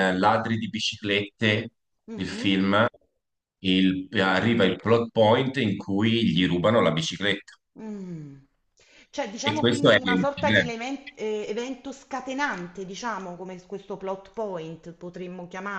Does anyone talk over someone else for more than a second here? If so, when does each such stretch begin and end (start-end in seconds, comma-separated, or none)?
9.4-10.7